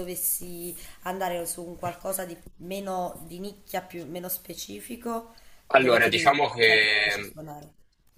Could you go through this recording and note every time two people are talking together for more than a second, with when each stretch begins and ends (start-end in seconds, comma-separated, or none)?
5.7-7.3